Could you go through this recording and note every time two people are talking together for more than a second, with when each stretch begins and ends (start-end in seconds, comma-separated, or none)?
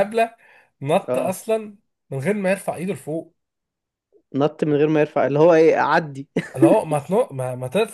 none